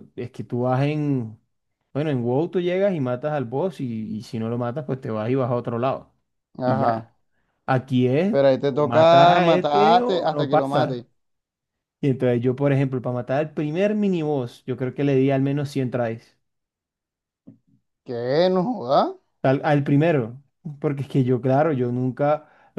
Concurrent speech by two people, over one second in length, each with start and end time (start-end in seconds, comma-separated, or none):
8.3-11.0